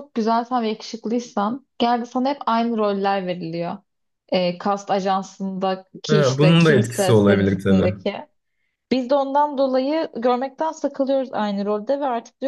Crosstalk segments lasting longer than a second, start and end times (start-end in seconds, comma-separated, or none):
6.1-7.9